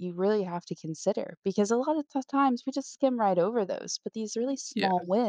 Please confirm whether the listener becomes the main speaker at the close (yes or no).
no